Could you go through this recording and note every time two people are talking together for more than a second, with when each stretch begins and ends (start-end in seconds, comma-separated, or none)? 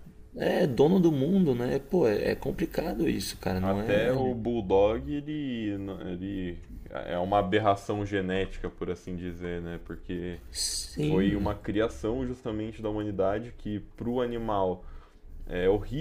none